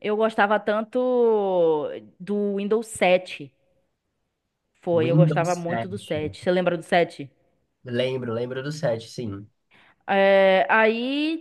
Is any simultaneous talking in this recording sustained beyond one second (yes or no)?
yes